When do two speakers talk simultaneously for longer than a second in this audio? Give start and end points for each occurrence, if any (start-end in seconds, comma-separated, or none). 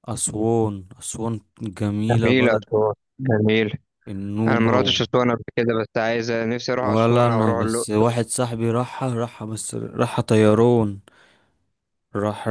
6.8-8.1